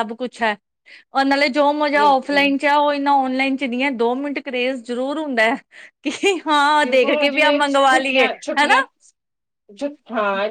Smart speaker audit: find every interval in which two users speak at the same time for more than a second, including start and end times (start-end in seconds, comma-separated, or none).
6.8-8.8